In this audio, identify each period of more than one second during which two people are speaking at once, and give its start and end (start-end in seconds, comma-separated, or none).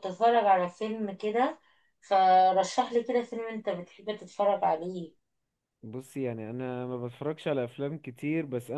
none